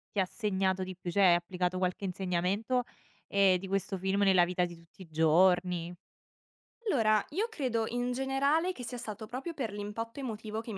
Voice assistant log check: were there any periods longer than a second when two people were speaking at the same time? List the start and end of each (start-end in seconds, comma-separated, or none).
none